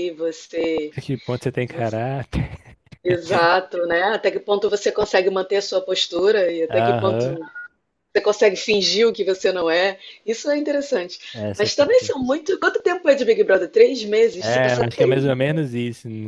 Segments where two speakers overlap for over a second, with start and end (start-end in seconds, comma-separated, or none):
14.4-15.6